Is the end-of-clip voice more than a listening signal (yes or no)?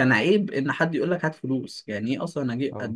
no